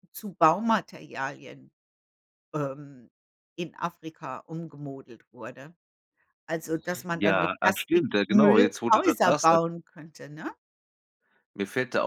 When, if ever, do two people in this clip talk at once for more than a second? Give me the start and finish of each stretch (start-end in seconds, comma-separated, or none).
7.1-9.6